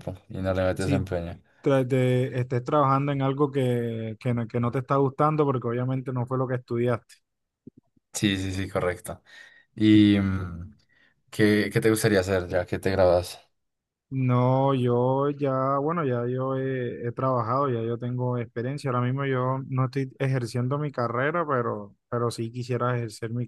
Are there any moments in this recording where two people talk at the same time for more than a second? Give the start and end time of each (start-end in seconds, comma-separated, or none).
none